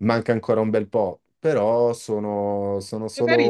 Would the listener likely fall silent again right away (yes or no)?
no